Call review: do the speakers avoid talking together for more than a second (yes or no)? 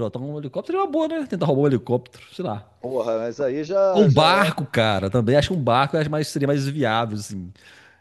yes